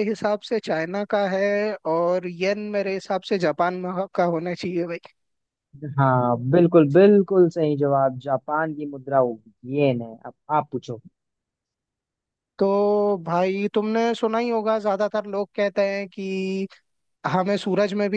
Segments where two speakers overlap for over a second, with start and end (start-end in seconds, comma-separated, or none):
none